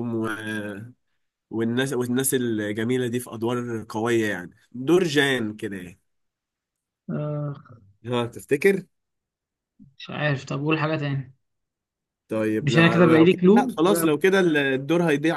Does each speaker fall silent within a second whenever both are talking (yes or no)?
no